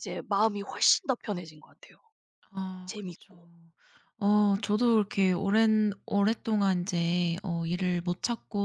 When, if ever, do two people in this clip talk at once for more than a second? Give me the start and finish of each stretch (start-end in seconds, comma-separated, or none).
none